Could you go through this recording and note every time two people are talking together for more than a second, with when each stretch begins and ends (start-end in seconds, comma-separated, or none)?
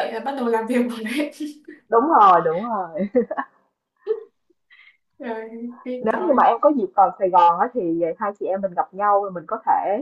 none